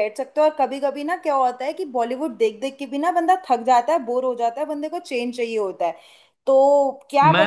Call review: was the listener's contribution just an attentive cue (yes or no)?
no